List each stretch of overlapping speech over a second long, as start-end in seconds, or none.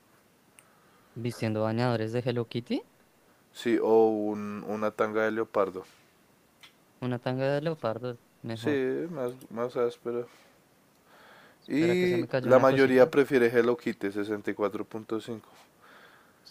11.7-13.1